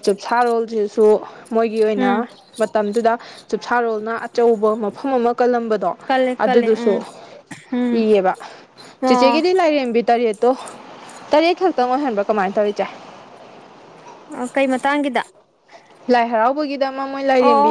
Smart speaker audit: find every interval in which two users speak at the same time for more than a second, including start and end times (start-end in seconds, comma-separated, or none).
none